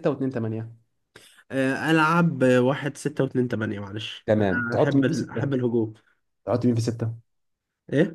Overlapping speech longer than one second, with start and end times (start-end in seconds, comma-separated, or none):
4.2-5.5